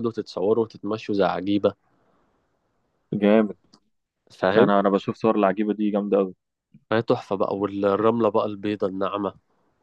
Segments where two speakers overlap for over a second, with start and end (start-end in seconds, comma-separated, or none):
none